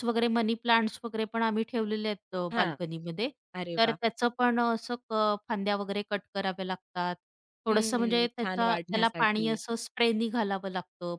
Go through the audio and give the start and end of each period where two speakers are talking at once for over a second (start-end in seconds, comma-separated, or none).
7.7-9.5